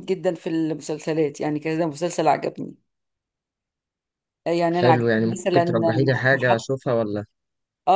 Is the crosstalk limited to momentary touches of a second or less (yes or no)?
no